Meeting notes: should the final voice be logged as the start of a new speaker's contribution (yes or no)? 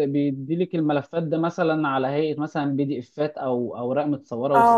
yes